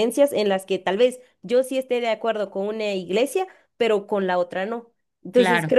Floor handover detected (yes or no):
no